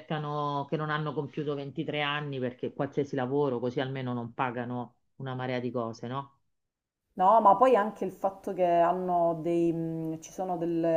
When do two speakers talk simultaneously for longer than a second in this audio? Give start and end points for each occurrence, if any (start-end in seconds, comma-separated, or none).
none